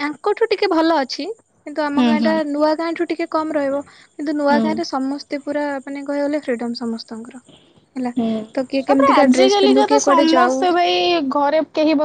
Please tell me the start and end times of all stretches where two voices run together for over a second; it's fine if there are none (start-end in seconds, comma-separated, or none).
8.9-10.6